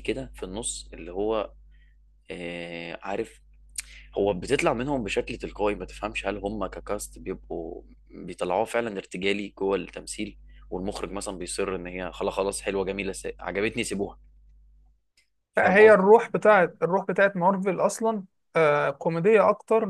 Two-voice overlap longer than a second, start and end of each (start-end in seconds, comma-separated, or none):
none